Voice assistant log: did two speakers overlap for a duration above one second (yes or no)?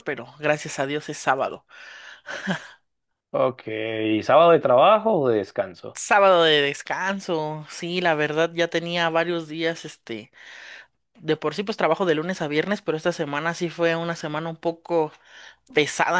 no